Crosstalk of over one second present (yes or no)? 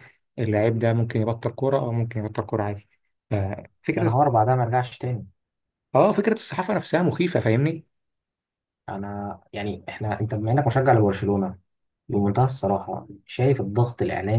no